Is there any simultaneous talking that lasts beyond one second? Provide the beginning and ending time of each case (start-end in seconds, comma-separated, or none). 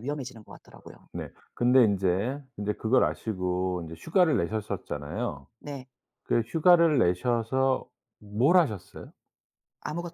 none